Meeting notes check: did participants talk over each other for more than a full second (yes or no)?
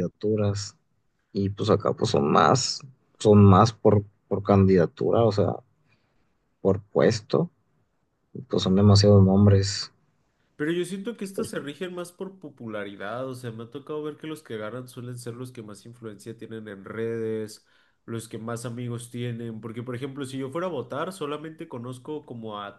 no